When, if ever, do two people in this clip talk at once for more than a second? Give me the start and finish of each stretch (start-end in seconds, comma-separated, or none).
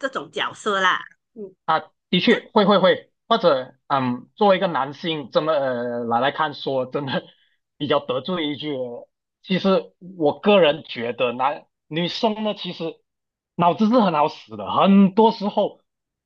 none